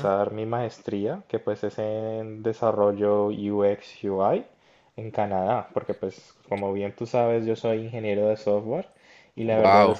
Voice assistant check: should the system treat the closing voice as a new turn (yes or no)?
no